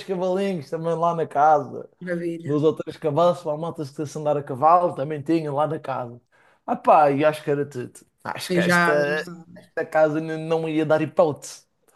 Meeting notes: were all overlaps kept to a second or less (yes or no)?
yes